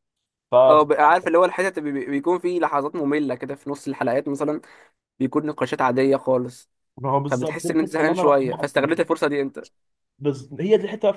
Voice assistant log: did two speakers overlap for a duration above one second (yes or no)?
yes